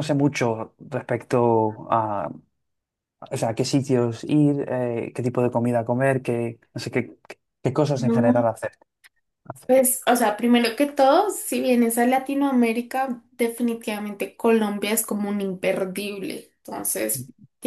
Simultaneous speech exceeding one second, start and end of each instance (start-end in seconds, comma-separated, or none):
none